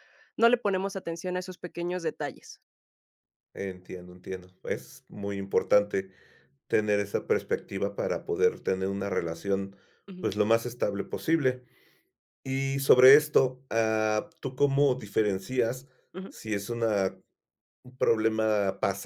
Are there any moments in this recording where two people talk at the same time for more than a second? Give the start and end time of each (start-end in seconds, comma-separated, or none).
none